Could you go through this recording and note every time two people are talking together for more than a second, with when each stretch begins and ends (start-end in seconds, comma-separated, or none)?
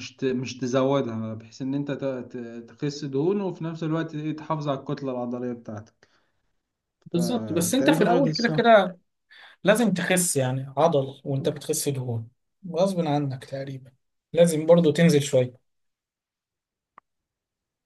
7.1-8.6